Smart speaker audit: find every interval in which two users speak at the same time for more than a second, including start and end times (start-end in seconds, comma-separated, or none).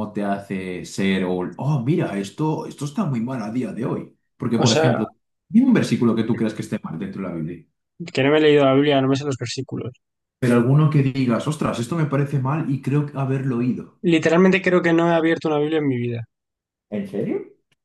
none